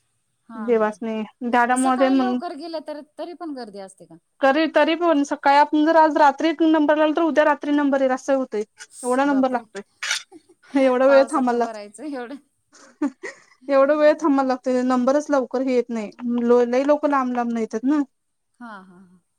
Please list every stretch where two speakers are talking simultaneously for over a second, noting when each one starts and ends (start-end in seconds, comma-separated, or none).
11.1-12.3